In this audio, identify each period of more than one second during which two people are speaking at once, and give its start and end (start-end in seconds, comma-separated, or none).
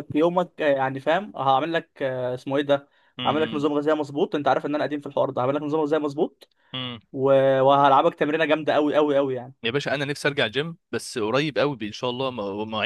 none